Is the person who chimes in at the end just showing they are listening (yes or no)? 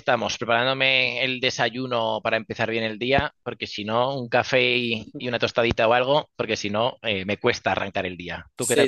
no